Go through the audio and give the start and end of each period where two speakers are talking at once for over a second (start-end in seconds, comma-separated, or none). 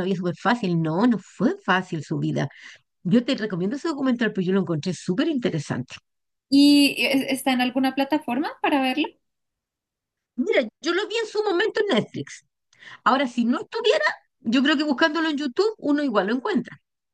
none